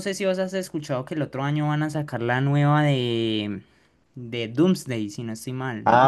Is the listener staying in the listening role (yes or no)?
no